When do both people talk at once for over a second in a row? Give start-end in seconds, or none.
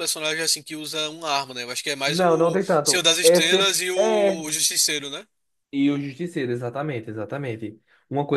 2.0-4.5